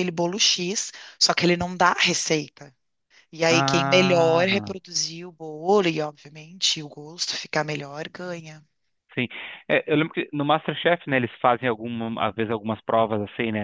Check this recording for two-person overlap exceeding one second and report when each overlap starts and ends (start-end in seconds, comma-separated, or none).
3.5-4.8